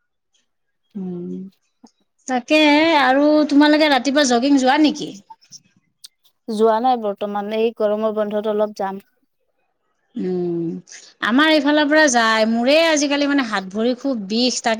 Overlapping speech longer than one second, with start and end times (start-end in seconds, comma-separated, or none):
none